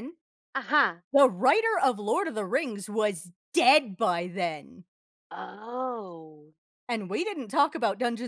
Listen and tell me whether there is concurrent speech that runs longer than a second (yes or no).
no